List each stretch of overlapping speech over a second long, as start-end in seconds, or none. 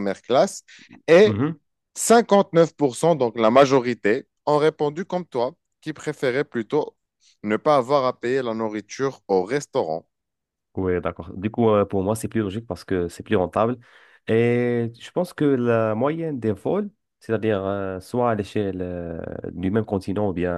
none